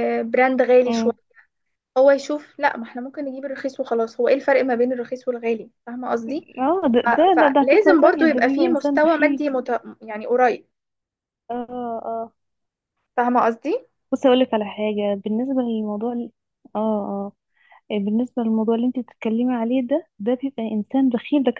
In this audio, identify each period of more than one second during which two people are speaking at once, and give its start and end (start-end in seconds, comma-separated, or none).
7.0-9.4